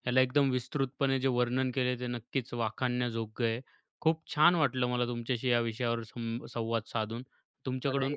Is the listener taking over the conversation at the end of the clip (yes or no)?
no